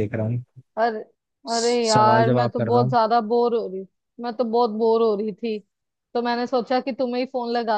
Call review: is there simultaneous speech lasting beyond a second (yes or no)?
yes